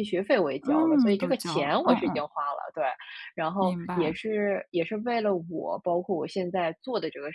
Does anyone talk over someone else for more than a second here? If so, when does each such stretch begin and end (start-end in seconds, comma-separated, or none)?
0.6-2.2